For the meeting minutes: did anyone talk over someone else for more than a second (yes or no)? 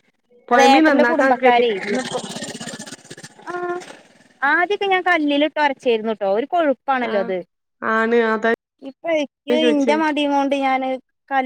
yes